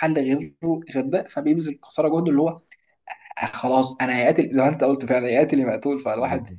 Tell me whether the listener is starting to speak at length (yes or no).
no